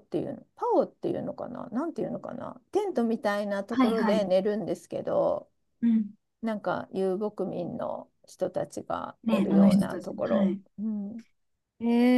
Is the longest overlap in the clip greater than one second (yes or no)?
yes